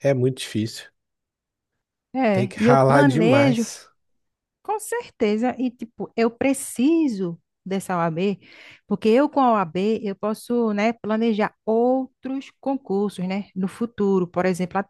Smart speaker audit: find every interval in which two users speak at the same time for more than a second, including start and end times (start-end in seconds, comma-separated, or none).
2.3-3.6